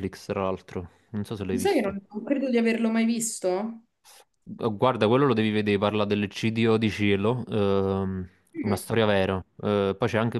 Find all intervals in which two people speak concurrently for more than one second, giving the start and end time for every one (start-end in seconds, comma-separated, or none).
none